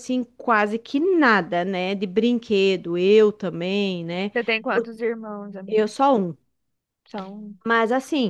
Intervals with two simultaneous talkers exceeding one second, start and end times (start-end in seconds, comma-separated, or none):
none